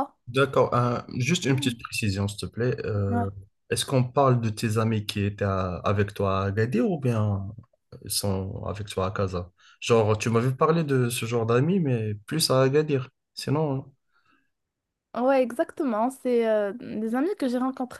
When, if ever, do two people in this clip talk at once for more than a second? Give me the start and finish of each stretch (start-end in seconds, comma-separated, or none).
none